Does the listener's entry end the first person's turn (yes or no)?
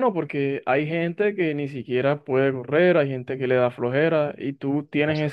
no